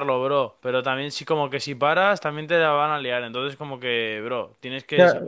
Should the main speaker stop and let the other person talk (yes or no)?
yes